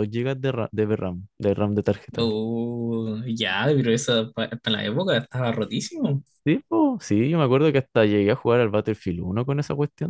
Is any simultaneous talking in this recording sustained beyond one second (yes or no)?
no